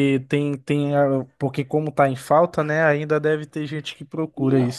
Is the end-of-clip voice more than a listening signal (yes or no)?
yes